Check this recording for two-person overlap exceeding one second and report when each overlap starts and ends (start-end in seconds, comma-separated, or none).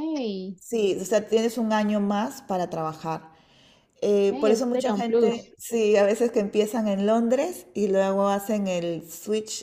4.3-5.5